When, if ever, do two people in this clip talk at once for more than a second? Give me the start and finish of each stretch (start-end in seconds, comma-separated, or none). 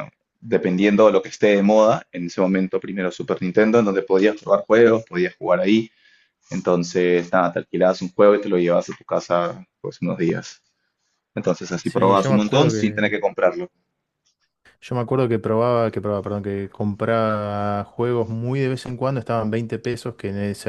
11.8-13.1